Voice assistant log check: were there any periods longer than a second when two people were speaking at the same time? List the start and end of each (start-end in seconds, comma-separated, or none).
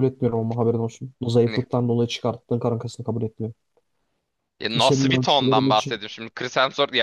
4.8-6.0